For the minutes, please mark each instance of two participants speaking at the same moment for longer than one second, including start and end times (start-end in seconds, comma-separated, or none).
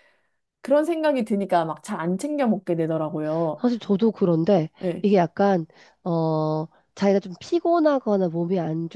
none